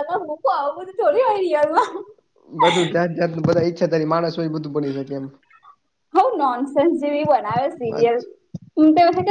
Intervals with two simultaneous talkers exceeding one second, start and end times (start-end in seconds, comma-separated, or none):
none